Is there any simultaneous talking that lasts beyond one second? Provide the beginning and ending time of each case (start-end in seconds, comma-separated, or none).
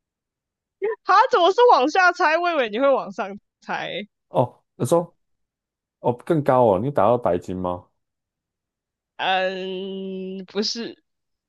none